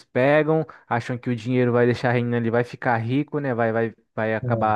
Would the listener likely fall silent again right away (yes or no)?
yes